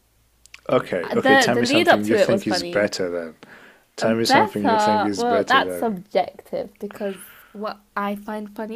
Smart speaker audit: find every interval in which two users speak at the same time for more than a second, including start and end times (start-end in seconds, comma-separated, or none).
1.1-2.9, 4.0-5.9